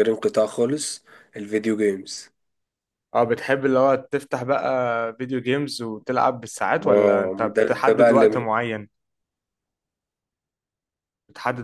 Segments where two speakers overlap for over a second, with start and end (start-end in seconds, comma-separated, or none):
6.8-8.5